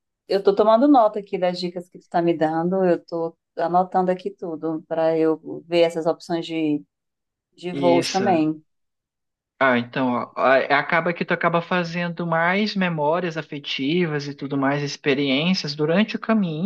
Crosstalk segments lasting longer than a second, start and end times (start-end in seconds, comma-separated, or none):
none